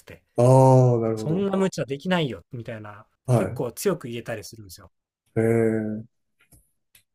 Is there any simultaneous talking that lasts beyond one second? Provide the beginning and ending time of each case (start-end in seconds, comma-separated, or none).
none